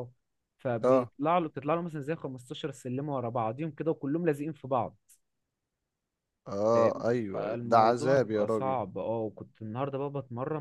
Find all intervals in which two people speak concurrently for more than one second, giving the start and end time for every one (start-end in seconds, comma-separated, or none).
6.7-8.8